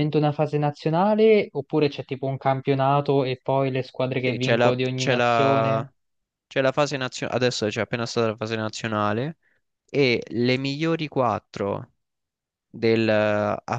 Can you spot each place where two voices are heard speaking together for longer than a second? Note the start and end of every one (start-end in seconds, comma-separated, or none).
4.1-5.9